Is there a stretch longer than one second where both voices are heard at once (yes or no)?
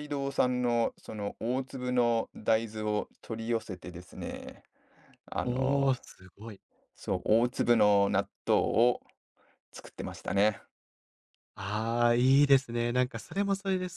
no